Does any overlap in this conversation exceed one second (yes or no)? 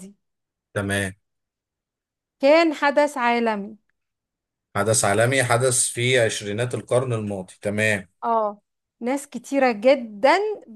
no